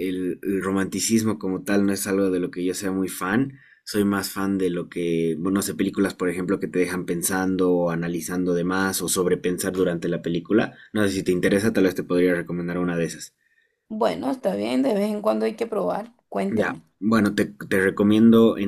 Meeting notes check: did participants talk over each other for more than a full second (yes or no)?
no